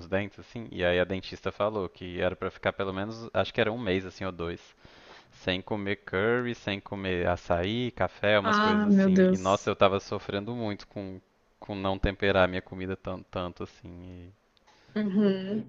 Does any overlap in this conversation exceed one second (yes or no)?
yes